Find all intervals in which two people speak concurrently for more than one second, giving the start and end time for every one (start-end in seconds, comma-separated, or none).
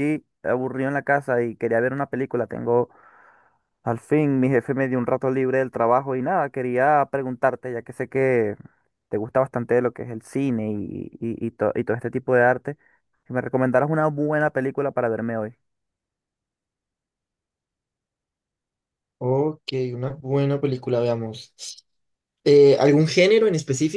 none